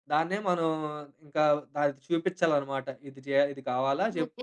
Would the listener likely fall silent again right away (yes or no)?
no